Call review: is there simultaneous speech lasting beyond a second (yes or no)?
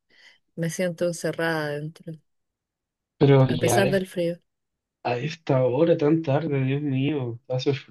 no